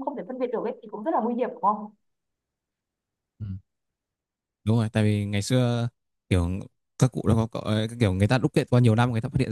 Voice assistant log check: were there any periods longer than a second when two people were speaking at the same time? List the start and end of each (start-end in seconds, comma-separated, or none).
none